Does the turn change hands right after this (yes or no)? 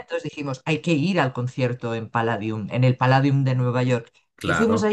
no